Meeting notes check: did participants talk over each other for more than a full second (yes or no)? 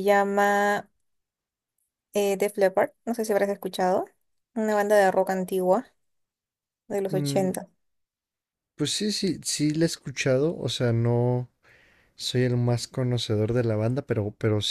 no